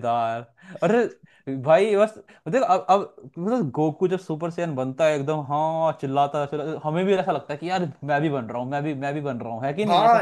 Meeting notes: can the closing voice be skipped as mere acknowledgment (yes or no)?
no